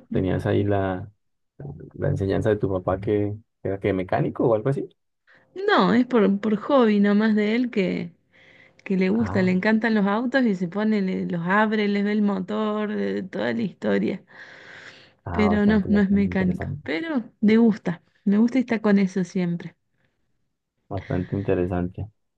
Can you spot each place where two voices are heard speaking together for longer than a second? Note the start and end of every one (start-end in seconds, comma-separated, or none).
15.3-16.9